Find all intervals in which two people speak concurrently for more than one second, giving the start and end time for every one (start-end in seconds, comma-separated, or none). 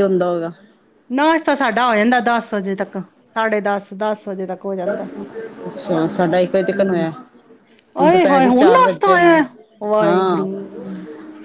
8.0-9.4